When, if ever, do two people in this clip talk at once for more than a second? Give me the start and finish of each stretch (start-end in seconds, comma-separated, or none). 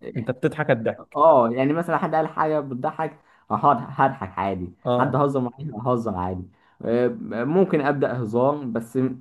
none